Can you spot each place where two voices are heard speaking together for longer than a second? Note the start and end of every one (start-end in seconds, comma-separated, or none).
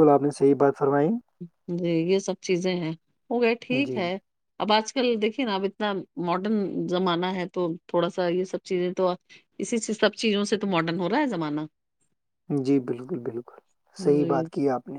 none